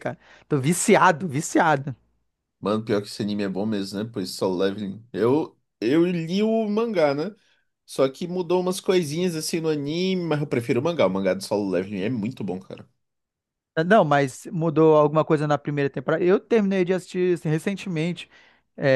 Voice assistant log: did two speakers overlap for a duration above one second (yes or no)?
no